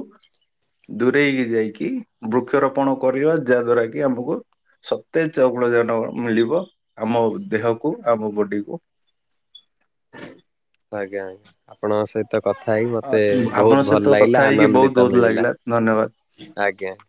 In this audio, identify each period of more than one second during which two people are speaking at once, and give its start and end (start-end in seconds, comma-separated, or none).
13.6-15.5